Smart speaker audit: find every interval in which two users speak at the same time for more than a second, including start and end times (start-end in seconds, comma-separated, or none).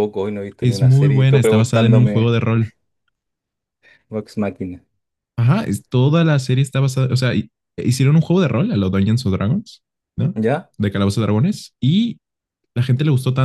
0.6-2.3